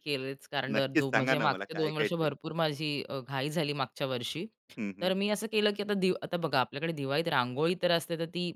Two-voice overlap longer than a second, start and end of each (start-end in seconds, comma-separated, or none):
0.8-2.3